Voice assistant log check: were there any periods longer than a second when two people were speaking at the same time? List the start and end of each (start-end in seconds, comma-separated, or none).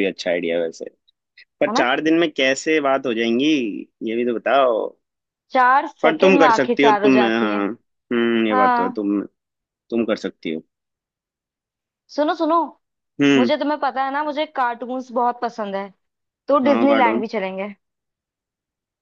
6.0-7.7